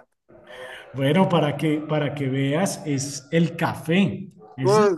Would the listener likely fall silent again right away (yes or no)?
no